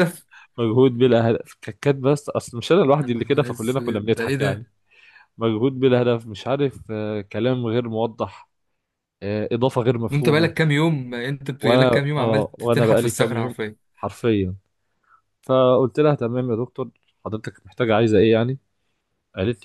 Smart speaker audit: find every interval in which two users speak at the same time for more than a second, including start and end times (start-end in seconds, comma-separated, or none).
3.0-4.7, 11.6-13.6